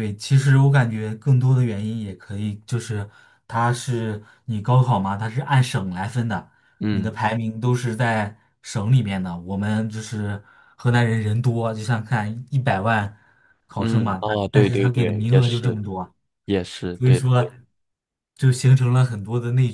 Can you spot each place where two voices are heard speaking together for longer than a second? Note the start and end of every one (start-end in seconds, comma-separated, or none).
13.8-15.8